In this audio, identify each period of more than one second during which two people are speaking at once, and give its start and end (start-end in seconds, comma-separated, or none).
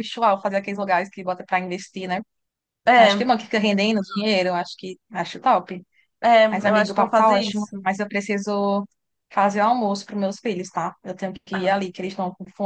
6.5-7.8